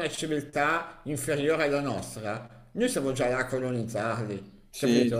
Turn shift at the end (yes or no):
no